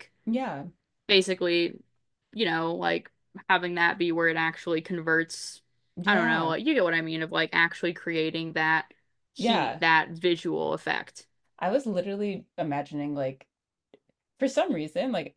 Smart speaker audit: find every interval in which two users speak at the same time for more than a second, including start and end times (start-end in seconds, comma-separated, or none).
none